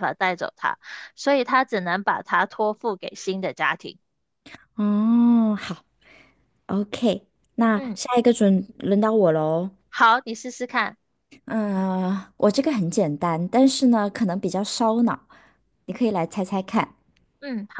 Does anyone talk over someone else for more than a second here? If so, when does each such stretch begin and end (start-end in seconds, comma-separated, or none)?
none